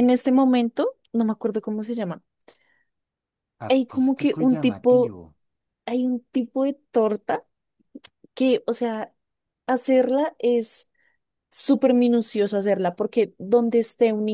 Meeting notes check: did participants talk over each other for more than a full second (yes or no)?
yes